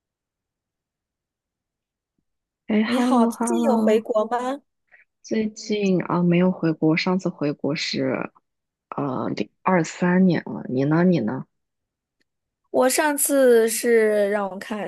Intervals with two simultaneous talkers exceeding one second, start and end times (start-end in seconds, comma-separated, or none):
2.8-4.1